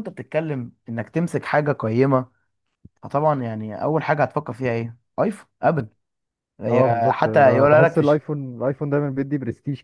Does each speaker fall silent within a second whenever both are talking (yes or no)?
no